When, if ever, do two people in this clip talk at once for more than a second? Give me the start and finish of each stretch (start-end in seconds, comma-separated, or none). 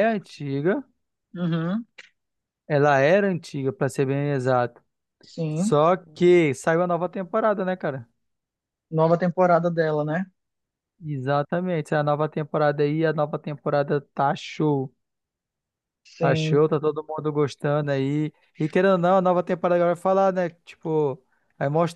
none